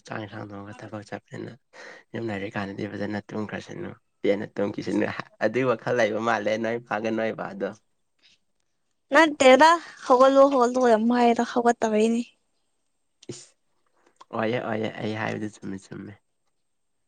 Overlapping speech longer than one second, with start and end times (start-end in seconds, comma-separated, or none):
none